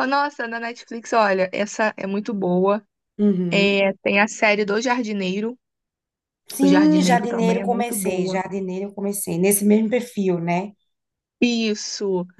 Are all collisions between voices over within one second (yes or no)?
no